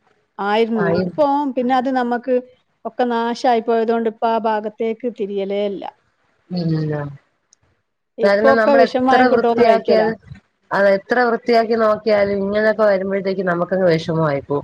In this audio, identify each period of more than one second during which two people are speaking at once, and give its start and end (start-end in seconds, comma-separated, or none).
8.3-10.1